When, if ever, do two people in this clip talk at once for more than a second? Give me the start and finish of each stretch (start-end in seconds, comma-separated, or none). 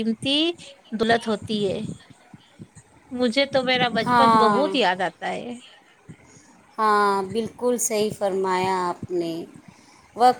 none